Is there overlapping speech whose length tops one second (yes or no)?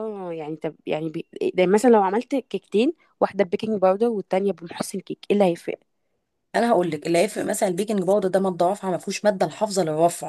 no